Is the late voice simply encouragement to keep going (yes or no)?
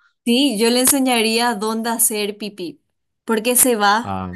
yes